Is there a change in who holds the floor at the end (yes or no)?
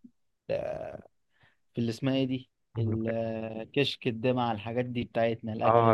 yes